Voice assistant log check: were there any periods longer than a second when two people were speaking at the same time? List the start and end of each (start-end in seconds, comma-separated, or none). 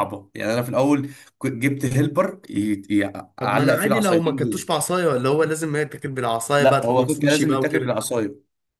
3.4-4.7, 6.6-8.0